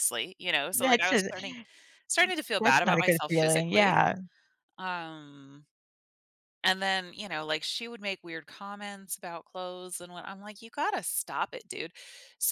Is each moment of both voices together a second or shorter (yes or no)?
no